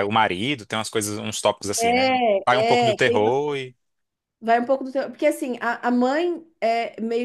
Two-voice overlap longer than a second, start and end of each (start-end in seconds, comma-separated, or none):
1.8-3.3